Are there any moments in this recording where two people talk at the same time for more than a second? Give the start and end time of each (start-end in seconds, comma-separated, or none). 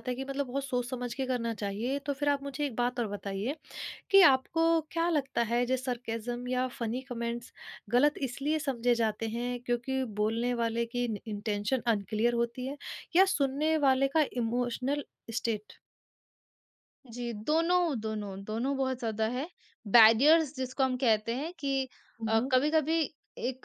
none